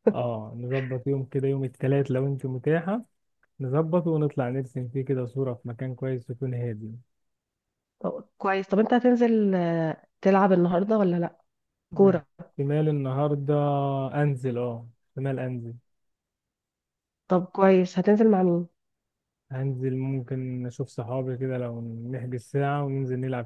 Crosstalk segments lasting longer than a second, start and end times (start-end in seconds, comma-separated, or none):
none